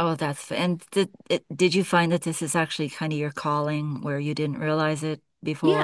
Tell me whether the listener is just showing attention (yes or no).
no